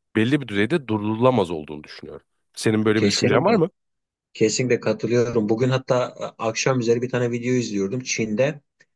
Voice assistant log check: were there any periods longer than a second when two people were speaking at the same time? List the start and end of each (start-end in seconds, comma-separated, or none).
none